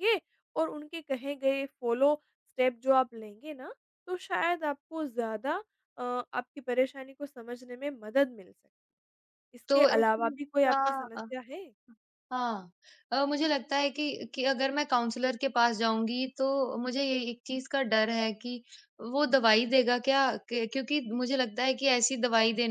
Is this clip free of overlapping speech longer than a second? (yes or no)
no